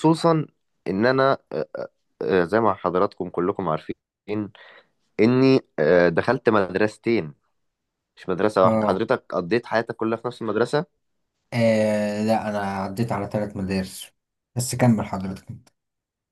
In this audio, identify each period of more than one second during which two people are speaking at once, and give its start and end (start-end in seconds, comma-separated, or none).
none